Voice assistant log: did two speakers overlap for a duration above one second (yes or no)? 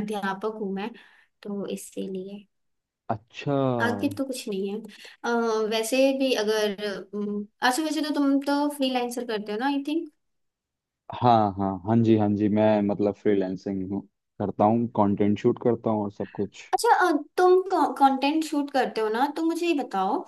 no